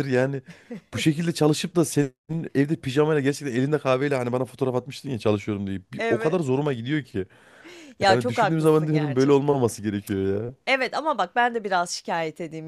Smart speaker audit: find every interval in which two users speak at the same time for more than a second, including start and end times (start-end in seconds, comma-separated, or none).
8.1-9.6